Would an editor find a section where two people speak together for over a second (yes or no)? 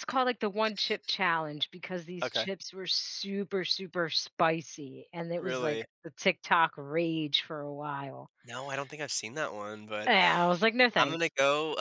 no